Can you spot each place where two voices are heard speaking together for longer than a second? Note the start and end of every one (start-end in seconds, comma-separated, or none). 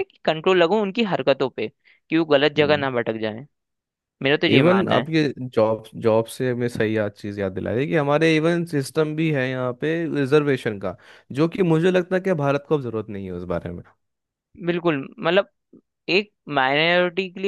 none